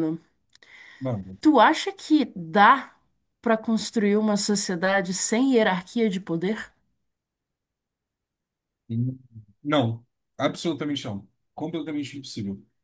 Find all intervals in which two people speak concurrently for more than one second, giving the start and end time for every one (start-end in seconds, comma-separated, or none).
none